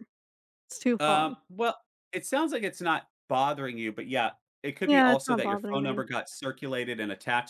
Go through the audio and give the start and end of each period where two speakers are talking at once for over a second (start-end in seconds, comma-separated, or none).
4.8-6.0